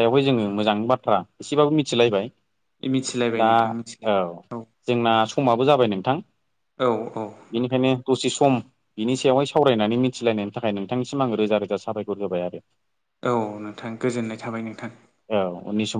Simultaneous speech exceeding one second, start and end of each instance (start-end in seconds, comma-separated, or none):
none